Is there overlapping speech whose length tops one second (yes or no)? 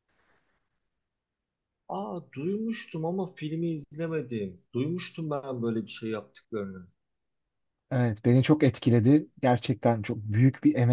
no